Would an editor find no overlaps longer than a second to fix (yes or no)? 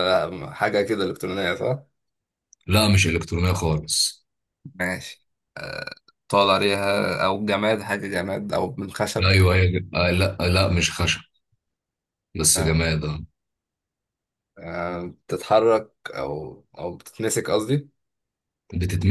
yes